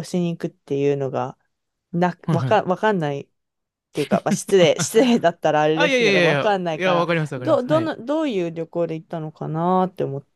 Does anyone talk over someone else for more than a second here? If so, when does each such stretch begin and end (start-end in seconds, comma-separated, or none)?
5.7-7.9